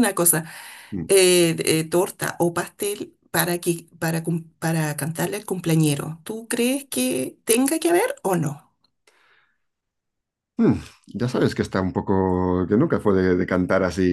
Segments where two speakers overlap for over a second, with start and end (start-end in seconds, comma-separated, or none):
none